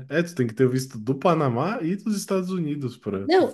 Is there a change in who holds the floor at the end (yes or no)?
yes